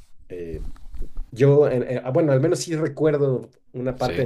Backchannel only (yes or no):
yes